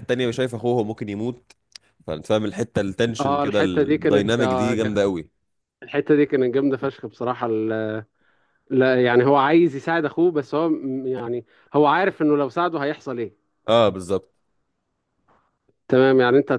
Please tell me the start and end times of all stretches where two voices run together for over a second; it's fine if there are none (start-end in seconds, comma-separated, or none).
3.2-5.0